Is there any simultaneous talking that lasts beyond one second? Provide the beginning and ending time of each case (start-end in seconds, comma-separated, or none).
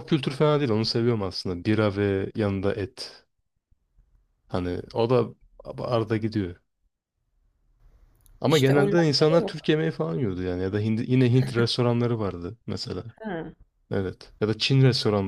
8.5-9.7